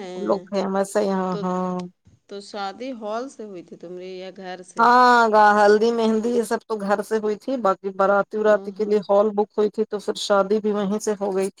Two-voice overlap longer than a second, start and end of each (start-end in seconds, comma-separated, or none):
none